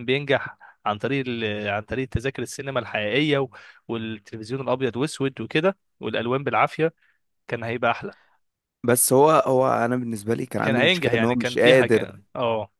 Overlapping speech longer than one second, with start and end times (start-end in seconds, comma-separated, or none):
10.6-12.2